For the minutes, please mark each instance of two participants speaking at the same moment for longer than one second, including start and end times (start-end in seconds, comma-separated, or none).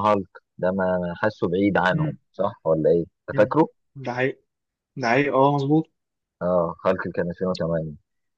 none